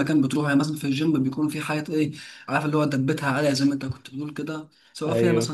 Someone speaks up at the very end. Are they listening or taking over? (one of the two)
listening